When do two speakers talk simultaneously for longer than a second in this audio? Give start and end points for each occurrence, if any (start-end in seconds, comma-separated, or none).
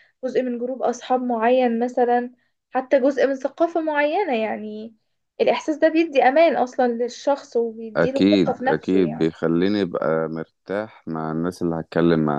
8.0-9.3